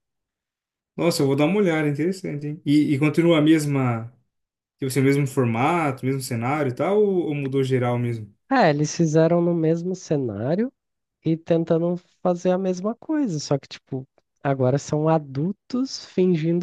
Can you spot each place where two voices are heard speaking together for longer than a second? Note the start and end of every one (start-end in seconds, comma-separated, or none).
none